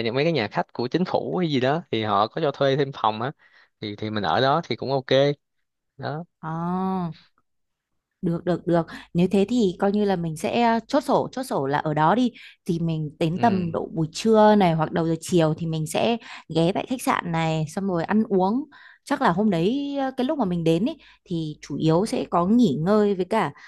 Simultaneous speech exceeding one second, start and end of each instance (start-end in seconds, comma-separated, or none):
none